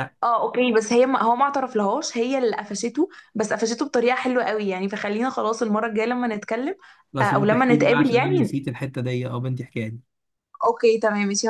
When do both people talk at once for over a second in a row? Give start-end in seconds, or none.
7.2-8.6